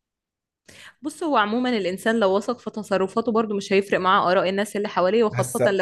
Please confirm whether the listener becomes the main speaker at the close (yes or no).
no